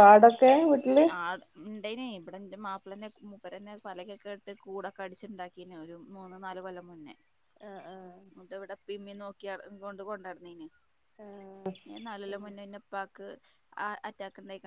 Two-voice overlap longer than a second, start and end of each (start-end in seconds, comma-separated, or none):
none